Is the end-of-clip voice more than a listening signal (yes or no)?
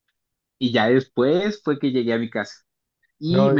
no